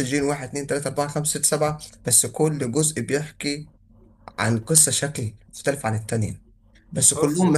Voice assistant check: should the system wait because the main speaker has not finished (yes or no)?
yes